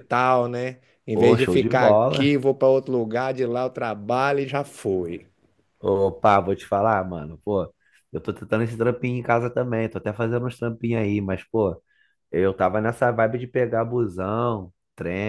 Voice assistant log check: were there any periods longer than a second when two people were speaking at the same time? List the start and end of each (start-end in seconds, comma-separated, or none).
1.1-2.3